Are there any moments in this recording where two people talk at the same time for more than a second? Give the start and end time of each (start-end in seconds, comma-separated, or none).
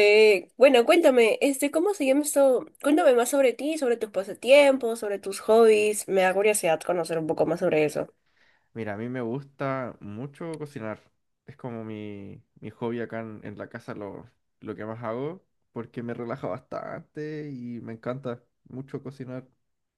none